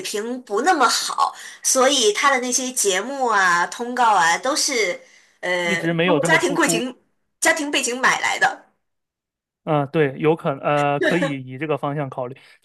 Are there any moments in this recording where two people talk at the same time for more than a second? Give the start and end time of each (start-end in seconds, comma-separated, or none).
5.6-6.9